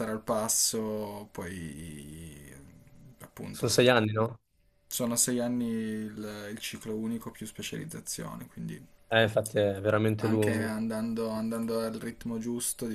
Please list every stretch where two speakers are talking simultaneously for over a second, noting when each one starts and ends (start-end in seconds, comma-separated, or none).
none